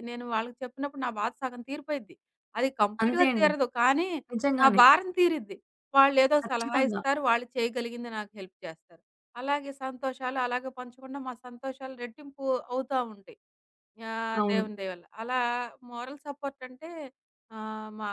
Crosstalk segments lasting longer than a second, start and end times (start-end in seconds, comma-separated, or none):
none